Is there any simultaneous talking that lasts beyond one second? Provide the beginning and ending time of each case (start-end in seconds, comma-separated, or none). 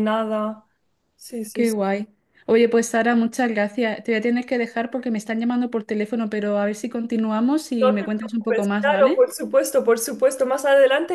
7.8-9.2